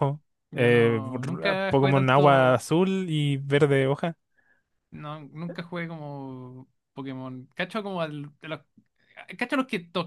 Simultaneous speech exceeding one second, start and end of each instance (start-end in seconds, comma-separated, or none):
0.5-2.6